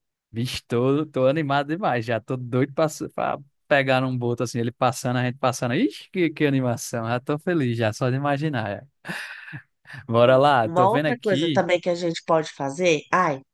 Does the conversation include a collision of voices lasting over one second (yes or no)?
yes